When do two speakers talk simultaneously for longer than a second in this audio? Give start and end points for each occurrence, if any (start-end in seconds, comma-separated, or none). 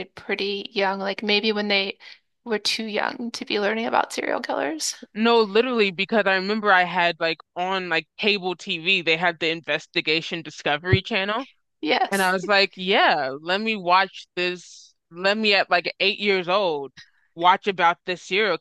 none